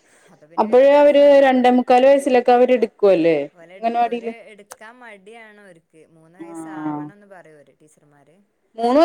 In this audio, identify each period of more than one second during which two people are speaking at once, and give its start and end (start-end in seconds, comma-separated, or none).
0.7-2.9